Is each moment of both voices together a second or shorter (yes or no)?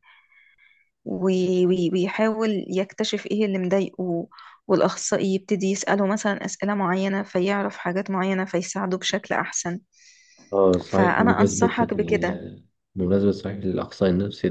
no